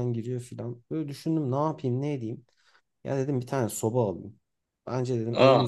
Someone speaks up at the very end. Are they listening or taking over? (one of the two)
listening